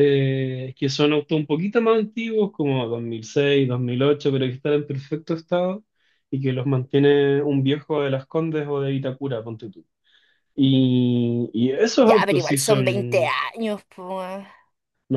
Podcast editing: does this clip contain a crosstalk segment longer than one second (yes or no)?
yes